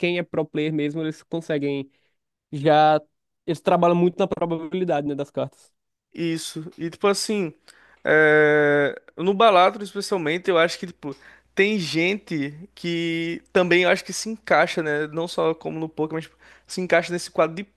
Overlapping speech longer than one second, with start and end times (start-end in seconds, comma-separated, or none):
none